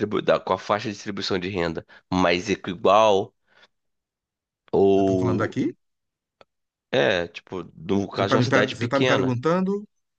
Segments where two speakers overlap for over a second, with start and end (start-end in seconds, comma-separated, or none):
8.2-9.4